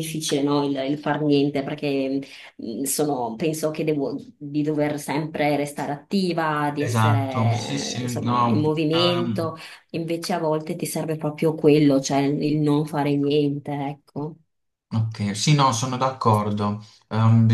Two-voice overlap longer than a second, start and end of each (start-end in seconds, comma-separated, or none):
6.8-8.8